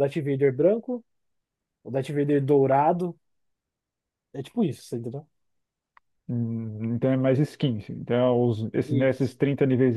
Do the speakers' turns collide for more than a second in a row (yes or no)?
no